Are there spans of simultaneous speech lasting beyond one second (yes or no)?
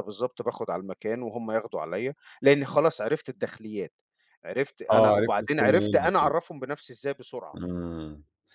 yes